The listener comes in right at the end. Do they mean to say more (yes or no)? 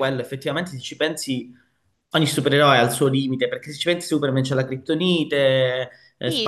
yes